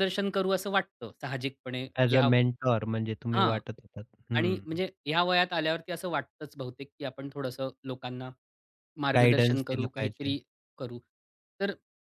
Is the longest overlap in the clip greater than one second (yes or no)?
yes